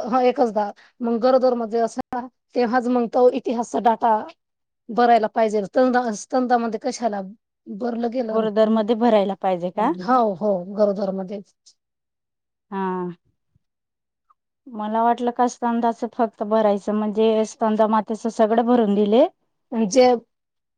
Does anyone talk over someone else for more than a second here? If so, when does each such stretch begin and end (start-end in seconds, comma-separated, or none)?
none